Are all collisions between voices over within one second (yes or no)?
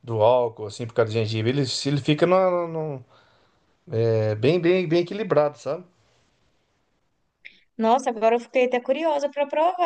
yes